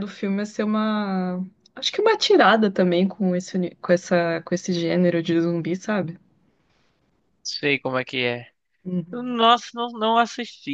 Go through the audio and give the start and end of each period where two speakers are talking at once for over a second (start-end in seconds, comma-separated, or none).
none